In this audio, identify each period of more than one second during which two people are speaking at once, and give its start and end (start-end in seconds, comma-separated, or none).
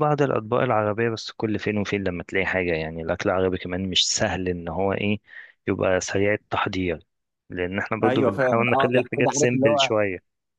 8.0-9.9